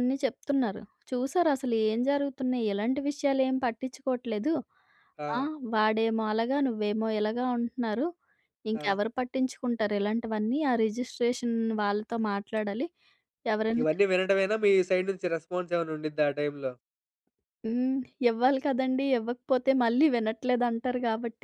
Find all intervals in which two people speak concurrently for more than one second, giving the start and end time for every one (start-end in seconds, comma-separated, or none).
none